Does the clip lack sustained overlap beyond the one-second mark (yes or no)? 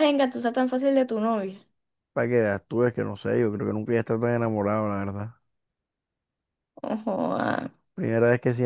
yes